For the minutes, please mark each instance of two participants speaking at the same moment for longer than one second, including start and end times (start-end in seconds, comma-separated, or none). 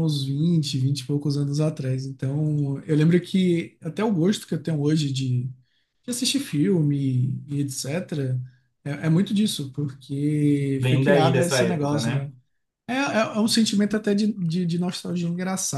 10.8-12.3